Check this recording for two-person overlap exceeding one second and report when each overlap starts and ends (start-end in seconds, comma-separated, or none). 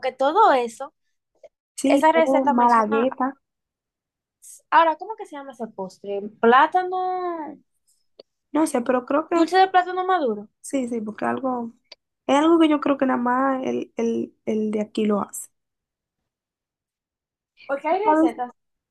1.8-3.1